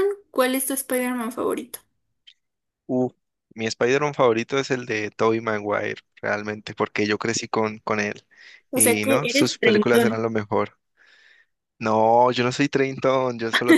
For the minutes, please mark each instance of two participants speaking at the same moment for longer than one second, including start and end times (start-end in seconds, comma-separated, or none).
8.7-10.3